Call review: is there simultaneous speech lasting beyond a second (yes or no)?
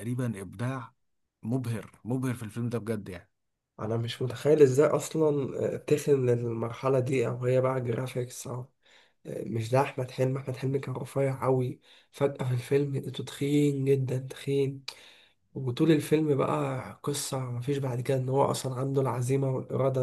no